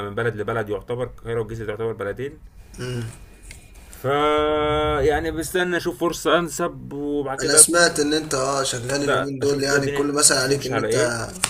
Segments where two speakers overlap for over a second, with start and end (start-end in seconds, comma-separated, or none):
9.0-11.0